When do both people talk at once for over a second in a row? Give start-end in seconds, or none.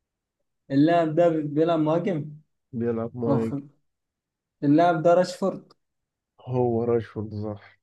none